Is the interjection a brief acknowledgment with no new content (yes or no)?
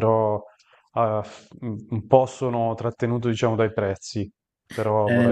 no